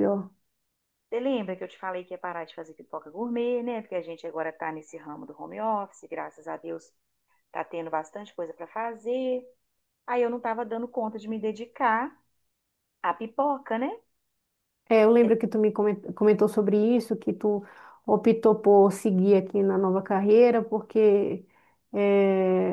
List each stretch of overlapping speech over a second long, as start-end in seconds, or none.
none